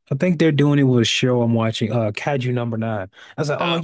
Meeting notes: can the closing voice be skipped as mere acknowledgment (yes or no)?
yes